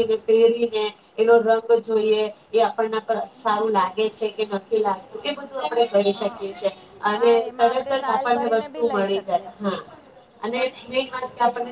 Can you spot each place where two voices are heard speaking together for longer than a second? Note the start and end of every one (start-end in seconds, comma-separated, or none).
7.2-9.5